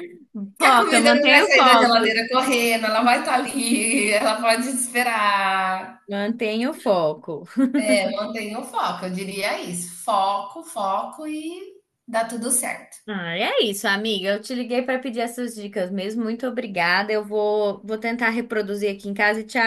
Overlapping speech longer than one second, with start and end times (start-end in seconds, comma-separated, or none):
0.6-2.2